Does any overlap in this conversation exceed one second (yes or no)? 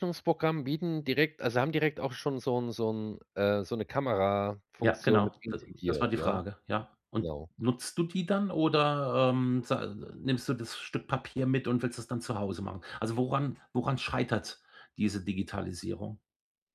yes